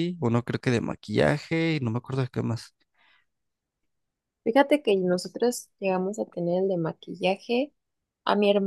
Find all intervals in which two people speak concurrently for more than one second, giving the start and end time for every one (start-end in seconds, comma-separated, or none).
none